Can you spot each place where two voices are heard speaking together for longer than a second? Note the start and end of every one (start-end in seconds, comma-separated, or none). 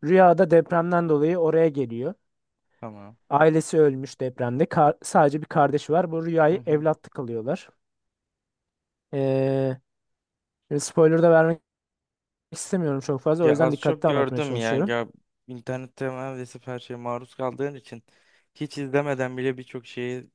13.4-14.9